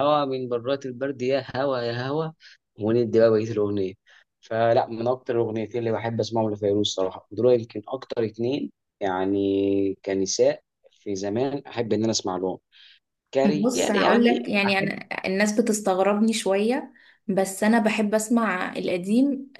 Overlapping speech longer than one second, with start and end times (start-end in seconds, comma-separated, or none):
13.4-14.9